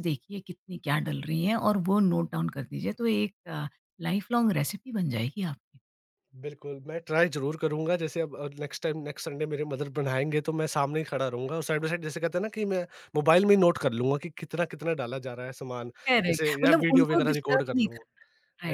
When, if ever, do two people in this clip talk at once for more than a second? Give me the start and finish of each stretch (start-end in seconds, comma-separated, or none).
16.3-18.2